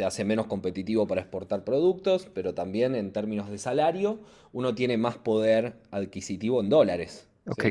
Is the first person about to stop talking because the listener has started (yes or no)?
yes